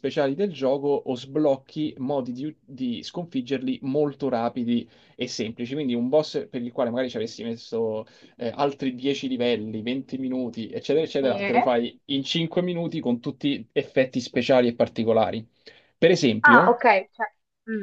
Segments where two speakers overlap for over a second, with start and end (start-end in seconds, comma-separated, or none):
none